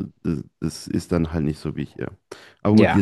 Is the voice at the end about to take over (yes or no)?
no